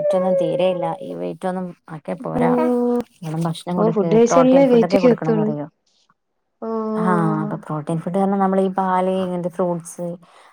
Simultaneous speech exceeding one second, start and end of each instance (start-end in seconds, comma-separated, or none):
3.8-5.5